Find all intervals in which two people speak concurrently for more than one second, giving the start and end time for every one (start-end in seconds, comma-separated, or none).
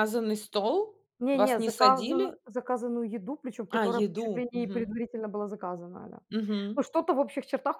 1.2-2.4, 3.7-5.0